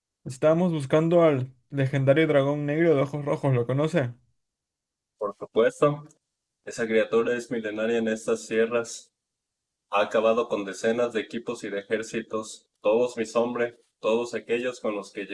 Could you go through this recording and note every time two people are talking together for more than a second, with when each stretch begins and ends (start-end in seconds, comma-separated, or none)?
none